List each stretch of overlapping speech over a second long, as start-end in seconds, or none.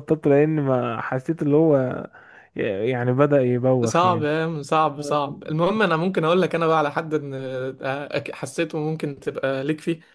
none